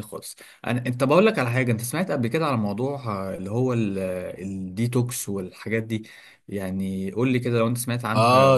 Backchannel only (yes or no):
no